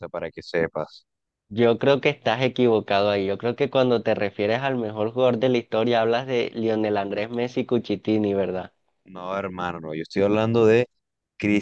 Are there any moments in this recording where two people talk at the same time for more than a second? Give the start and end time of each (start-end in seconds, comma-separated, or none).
none